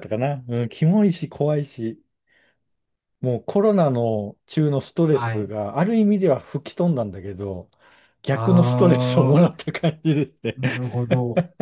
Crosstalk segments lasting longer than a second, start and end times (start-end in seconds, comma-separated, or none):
8.3-9.5